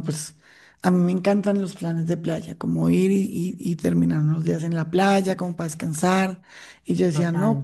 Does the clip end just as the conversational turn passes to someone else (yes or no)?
no